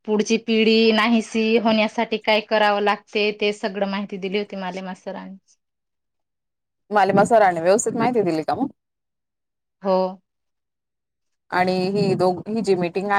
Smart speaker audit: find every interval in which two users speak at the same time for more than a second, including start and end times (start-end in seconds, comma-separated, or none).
none